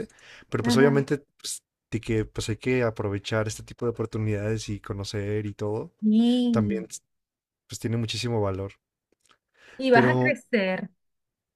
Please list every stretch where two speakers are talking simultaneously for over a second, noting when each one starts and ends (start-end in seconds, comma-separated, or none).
none